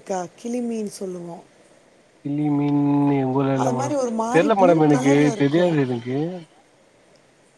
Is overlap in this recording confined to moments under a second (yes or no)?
no